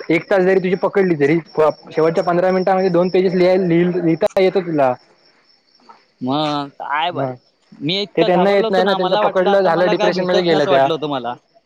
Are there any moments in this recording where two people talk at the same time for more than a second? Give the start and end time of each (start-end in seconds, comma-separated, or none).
8.2-10.9